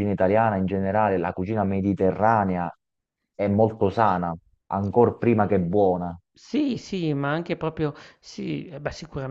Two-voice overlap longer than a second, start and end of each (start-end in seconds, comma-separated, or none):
none